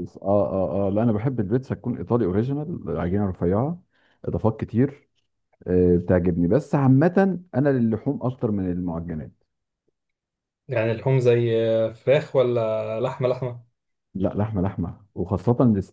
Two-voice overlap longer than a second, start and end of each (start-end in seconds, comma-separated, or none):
none